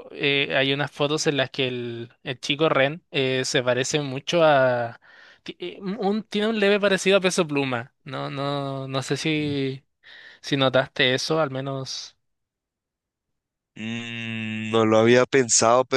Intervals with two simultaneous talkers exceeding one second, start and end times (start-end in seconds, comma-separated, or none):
none